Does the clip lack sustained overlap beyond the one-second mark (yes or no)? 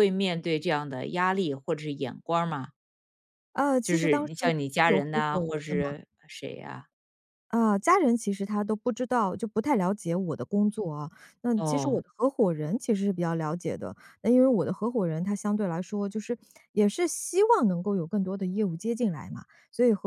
no